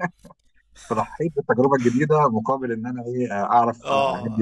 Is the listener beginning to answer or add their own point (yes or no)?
yes